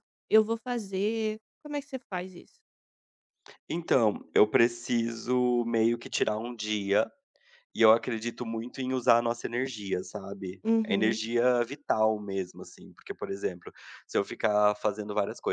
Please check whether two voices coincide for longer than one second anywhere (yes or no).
no